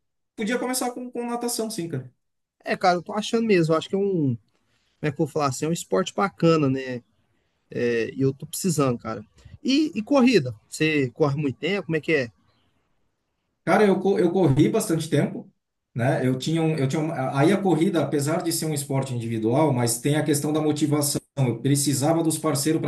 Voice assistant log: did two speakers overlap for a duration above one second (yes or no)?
no